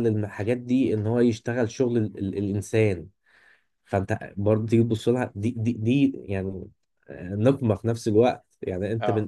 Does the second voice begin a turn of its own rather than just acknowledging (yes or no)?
no